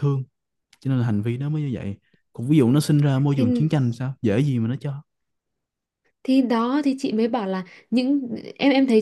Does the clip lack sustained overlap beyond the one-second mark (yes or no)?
yes